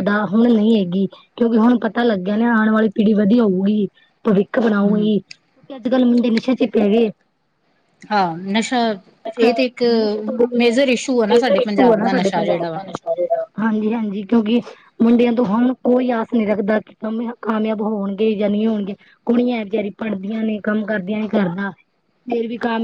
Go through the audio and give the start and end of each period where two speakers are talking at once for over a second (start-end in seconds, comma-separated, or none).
11.3-12.8